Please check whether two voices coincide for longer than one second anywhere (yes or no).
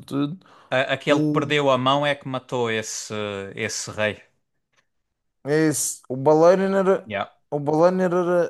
no